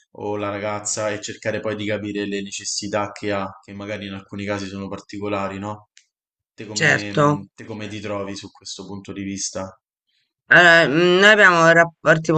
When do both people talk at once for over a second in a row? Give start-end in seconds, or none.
none